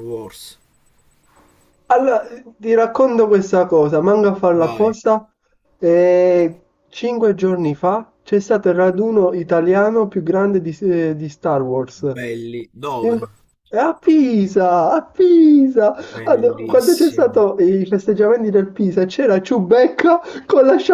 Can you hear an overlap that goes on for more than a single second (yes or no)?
yes